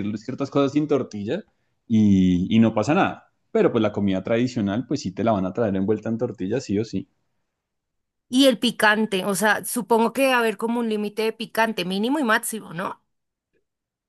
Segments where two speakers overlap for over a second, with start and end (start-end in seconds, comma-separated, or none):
none